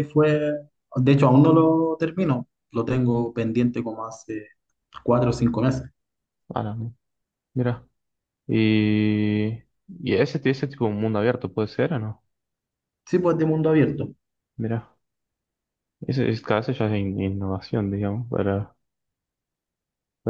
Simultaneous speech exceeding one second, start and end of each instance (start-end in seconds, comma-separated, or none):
none